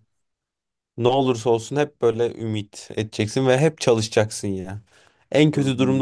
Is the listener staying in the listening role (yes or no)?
yes